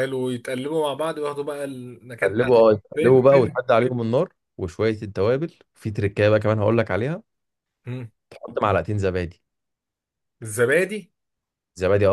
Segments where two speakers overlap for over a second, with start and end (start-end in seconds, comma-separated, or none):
2.2-3.6